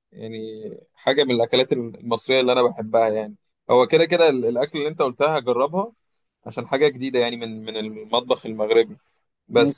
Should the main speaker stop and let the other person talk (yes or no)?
no